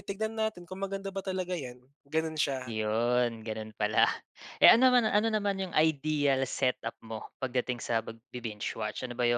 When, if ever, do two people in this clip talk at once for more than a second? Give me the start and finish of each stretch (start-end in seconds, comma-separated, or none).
none